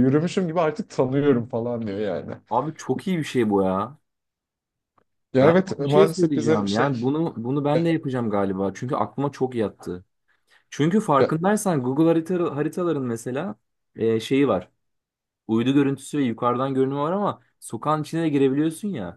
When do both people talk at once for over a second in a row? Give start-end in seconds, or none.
5.4-6.9